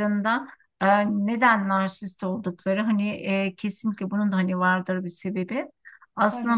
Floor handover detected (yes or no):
no